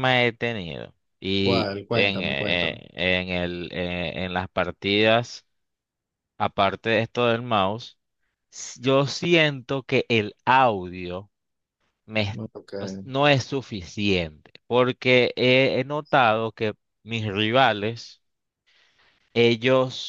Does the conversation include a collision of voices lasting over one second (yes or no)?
yes